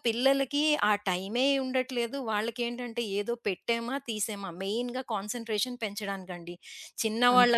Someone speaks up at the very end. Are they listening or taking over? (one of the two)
listening